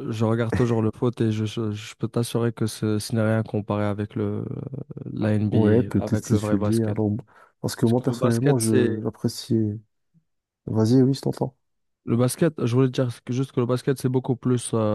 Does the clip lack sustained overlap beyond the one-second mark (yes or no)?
no